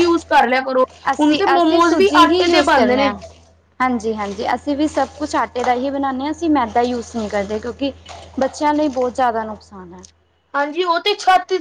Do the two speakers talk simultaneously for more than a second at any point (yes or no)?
yes